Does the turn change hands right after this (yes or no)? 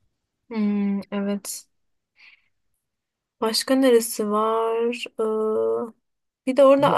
no